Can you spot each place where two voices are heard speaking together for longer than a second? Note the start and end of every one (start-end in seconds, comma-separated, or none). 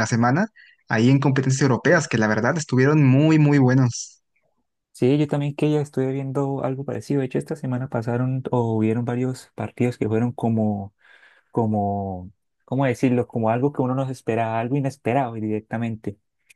none